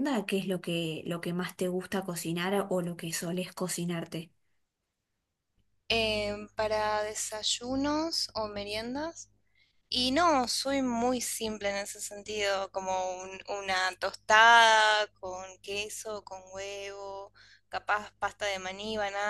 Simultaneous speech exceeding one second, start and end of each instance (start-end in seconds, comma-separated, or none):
none